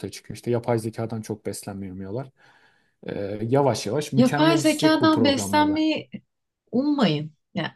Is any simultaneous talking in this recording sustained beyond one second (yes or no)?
yes